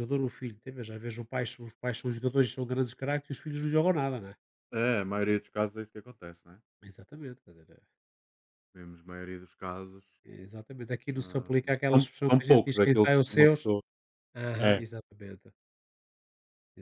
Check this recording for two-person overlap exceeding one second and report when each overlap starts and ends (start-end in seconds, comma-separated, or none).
11.2-13.7